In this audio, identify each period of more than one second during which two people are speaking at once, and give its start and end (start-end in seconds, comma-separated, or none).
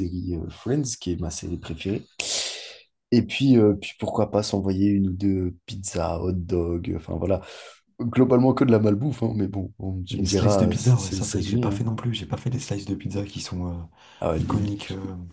10.1-11.8